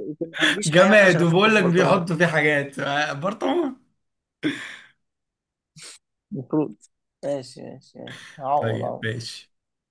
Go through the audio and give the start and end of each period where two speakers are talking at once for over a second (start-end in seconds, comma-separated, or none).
0.7-2.0